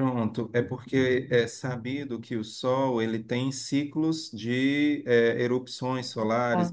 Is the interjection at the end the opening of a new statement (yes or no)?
no